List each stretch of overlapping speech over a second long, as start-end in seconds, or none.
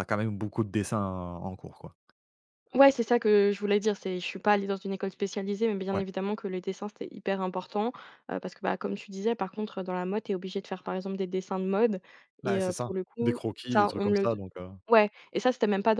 12.4-14.3